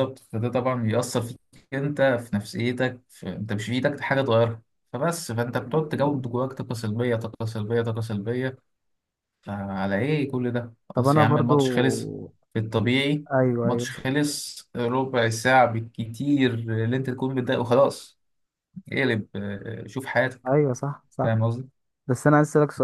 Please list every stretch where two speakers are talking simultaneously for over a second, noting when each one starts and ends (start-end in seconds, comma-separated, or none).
none